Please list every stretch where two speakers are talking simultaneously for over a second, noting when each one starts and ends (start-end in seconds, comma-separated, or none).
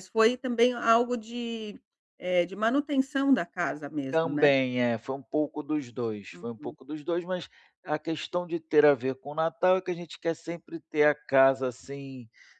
none